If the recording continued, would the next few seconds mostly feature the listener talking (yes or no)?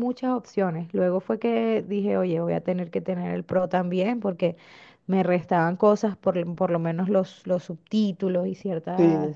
yes